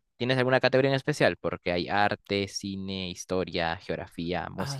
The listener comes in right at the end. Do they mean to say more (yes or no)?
yes